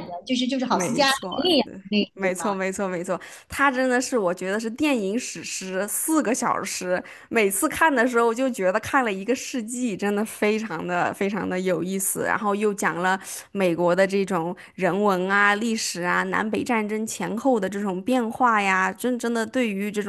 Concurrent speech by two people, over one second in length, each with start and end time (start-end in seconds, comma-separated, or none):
0.7-2.5